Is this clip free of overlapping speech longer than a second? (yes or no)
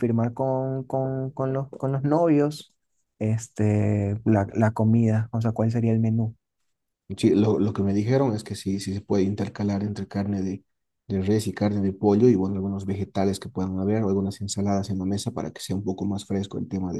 yes